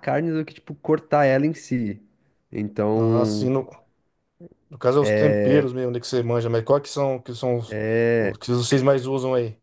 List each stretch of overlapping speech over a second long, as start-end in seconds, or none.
none